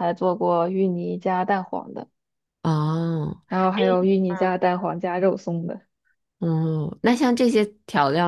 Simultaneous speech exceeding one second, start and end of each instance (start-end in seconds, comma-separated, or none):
none